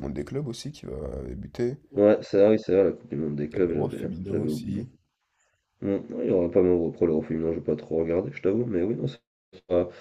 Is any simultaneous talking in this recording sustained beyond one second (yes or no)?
yes